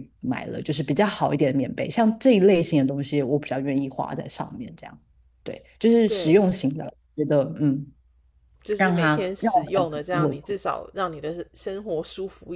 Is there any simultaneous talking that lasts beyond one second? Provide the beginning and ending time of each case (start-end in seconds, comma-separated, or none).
8.8-10.6